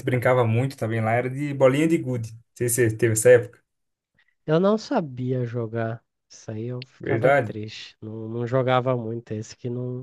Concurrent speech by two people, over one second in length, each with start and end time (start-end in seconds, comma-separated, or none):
none